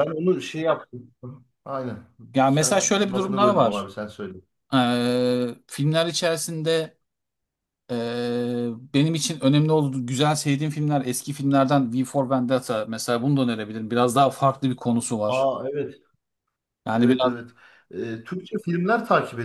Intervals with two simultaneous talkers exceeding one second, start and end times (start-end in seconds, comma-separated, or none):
2.5-3.9